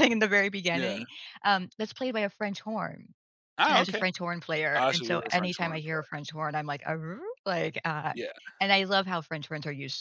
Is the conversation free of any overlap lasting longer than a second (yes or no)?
no